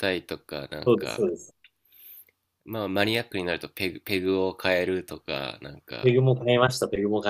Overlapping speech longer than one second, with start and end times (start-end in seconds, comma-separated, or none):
none